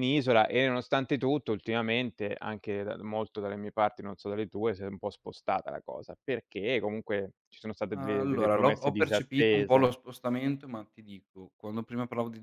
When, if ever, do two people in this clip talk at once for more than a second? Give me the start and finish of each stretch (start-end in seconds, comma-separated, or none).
7.9-9.9